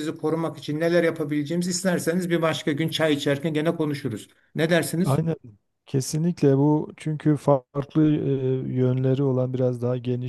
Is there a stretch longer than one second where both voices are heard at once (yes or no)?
no